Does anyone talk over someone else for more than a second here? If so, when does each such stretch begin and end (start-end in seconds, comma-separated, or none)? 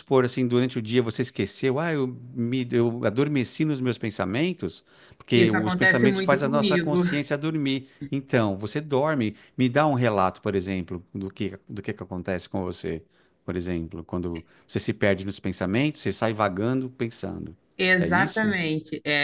5.3-7.0